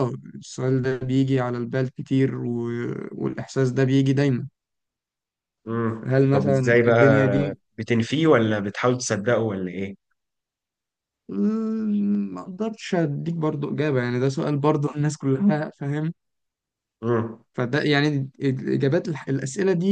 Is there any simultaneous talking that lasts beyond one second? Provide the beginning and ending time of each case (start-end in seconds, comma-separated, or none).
6.0-7.6